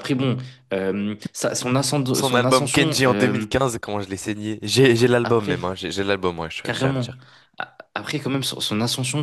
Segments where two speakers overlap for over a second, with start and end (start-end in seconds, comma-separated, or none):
2.1-3.5